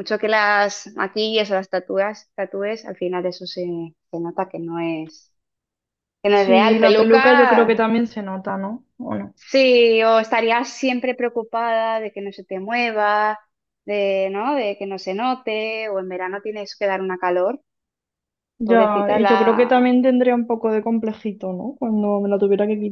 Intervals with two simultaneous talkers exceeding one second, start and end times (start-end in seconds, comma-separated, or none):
6.3-7.9, 18.6-20.0